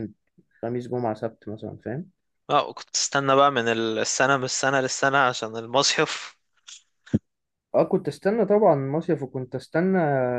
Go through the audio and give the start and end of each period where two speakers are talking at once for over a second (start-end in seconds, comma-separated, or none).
none